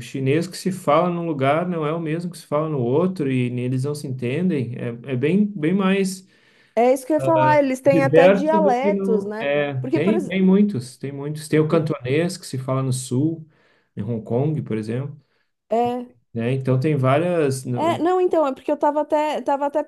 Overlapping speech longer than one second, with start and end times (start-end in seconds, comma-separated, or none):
7.9-10.4